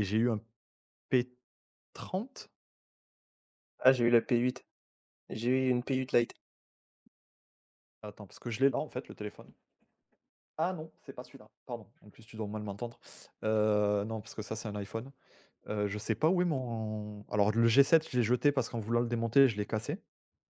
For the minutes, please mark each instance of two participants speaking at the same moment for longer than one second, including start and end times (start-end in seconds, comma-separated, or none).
none